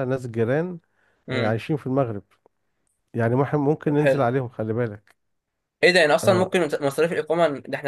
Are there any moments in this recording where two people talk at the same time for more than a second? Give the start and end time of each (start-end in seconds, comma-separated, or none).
none